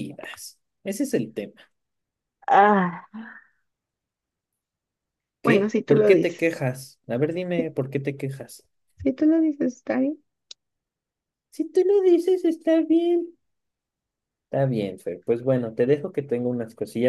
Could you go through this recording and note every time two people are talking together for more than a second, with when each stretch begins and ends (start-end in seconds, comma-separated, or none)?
5.4-6.6